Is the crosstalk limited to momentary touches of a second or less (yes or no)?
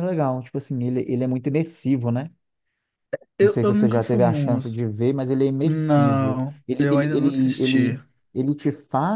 no